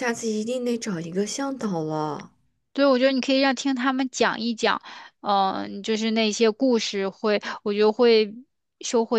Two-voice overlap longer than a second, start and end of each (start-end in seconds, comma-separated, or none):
none